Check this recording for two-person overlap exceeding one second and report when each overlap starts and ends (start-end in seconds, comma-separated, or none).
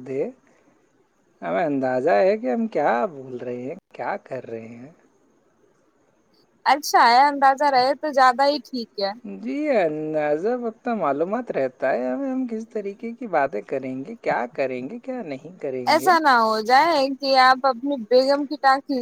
none